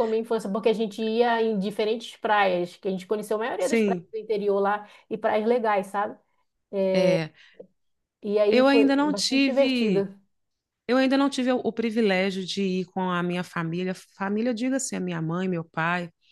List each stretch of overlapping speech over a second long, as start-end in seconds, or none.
8.5-10.1